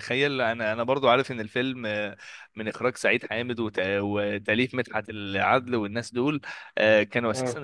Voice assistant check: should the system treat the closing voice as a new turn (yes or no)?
no